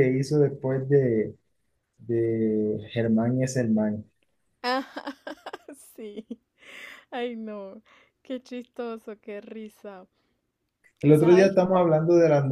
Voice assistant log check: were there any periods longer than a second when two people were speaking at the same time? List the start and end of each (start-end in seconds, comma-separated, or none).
none